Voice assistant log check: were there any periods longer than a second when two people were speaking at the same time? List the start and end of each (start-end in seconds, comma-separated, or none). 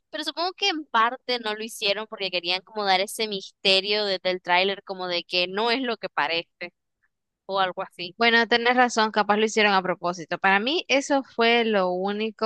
none